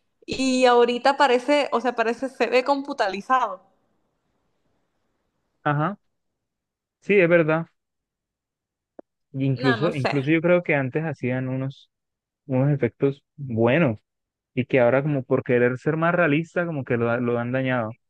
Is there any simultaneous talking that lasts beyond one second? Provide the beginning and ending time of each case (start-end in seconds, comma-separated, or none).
none